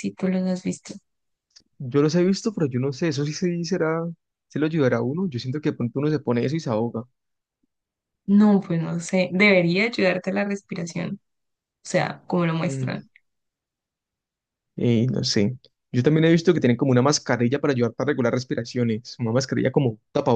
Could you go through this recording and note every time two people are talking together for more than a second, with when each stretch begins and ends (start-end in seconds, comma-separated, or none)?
none